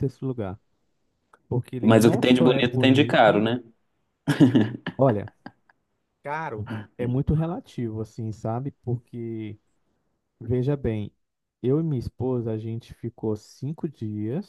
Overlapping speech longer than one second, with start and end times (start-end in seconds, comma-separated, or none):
1.8-3.4